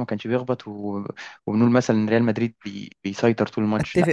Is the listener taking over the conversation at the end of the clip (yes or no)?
yes